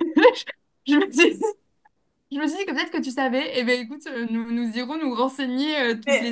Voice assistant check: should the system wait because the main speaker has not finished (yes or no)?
no